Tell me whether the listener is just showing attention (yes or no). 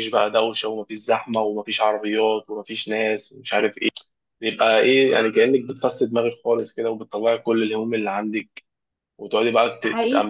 yes